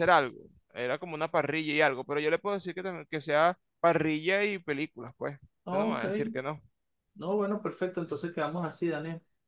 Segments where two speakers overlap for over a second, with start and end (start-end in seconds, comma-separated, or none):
none